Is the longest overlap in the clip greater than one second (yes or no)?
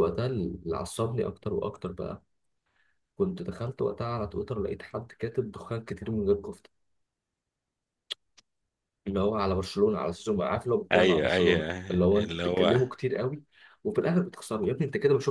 yes